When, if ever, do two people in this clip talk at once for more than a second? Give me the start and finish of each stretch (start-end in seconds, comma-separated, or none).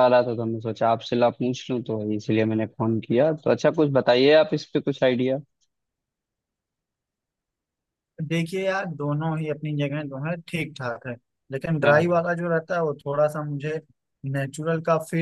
none